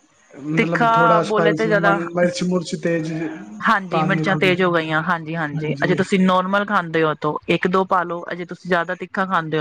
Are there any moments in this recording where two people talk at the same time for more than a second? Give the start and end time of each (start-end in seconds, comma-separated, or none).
0.5-2.0